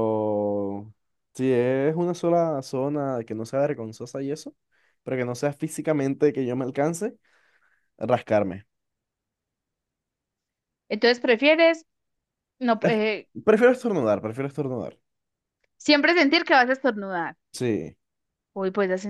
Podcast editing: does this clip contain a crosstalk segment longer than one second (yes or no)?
no